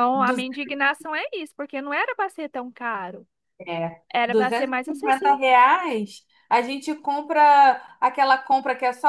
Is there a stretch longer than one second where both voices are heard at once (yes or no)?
yes